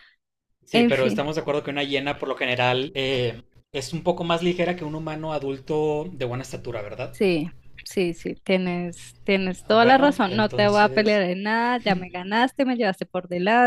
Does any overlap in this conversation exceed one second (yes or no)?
yes